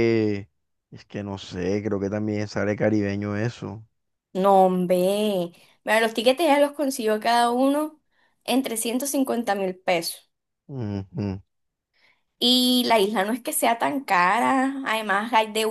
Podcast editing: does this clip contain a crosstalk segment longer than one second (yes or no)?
no